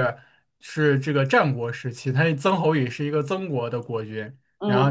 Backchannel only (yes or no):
yes